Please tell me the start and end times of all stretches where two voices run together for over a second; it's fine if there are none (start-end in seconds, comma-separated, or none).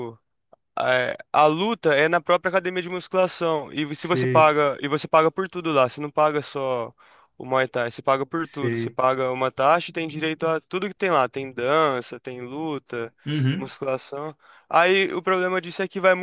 none